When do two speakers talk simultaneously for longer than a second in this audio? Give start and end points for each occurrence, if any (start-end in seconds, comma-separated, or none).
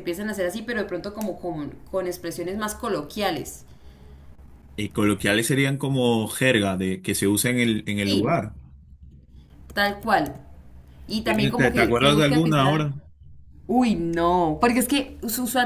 11.2-12.9